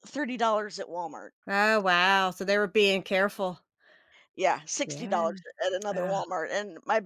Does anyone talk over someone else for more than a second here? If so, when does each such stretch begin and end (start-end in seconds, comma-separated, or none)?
none